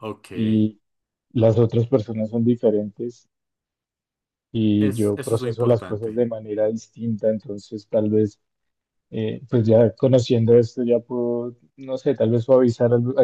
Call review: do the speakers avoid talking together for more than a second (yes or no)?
no